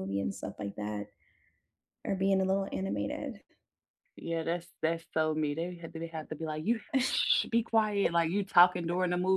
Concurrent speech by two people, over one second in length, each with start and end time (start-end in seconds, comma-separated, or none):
none